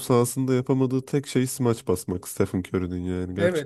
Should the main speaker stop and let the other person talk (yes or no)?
yes